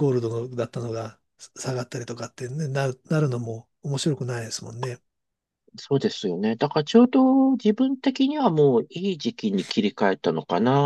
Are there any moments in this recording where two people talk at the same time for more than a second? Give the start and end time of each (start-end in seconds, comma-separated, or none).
none